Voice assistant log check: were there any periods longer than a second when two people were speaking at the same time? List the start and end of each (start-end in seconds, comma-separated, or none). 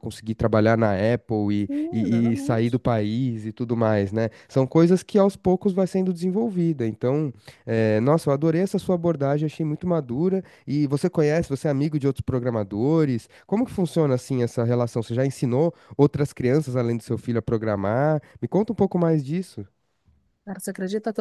1.5-2.8